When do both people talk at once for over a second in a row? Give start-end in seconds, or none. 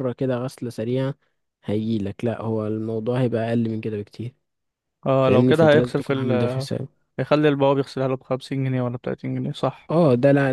5.2-6.5